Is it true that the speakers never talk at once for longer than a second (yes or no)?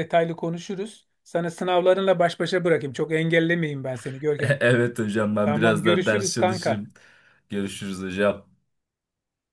no